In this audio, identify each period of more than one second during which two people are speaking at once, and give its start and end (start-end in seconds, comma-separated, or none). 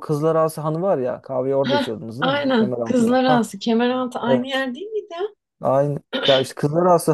1.6-3.4